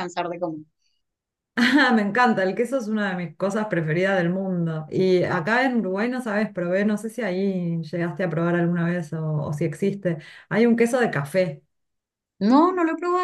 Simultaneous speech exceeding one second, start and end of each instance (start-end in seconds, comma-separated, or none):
none